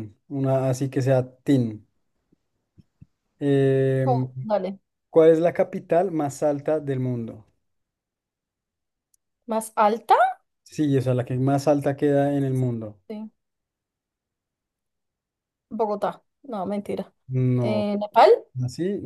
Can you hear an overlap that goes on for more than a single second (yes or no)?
no